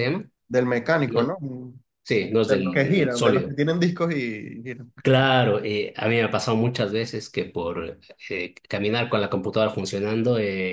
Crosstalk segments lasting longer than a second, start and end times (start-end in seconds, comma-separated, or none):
2.2-3.6